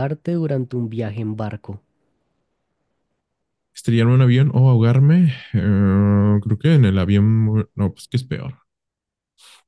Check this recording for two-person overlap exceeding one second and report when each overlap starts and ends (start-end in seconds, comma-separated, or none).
none